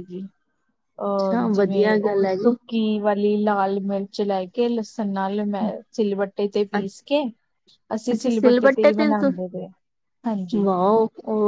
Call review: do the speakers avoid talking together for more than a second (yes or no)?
no